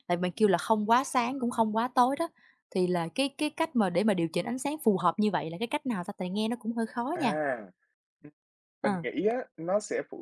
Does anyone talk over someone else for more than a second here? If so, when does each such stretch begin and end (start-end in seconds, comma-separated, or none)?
none